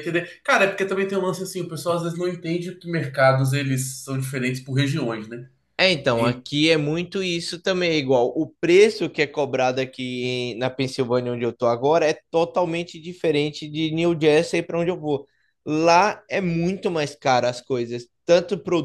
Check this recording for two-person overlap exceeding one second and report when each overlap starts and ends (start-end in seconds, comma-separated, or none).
none